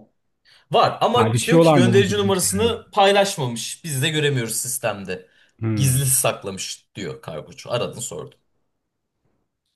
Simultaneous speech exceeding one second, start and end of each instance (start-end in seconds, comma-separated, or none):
1.1-2.8